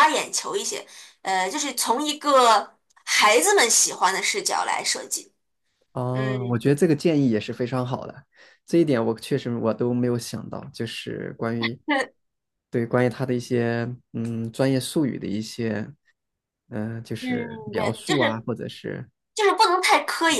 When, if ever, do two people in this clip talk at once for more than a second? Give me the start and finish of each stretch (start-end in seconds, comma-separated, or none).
17.2-18.4